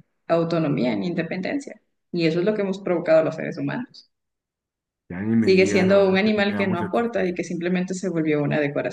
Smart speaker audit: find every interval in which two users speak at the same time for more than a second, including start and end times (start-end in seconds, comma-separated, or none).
5.4-7.3